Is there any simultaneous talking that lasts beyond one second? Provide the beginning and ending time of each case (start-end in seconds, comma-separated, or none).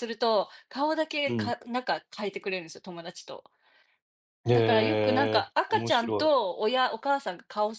4.5-6.3